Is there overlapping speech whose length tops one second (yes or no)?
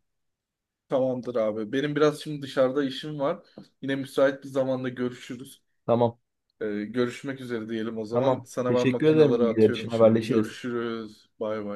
yes